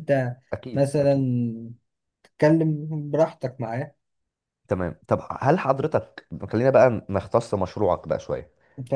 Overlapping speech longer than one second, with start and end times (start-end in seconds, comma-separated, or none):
none